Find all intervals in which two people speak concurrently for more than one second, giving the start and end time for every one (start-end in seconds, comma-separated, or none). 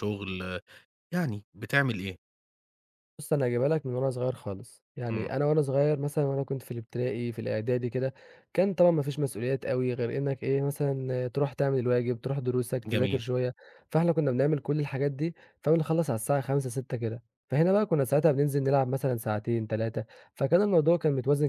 none